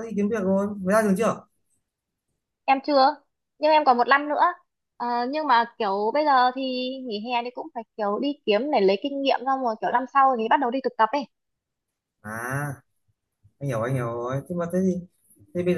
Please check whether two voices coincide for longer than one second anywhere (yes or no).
no